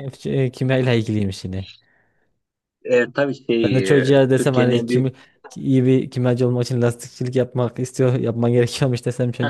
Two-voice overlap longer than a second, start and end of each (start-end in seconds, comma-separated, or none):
3.6-5.1